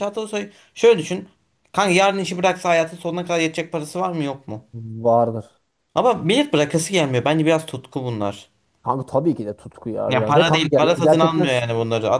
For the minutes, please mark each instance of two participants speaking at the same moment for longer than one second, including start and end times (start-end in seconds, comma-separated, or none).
10.1-11.4